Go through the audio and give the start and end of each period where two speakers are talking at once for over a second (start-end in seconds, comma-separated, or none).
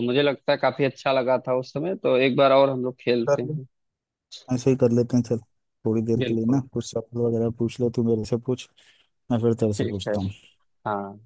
none